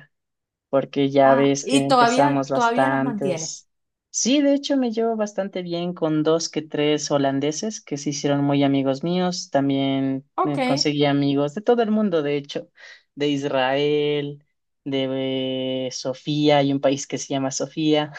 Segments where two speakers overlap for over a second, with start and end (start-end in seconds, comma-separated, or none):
1.2-3.5